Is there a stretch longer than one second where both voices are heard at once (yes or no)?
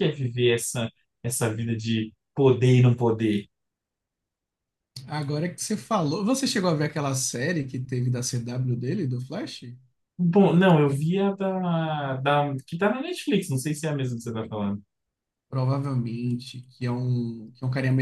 no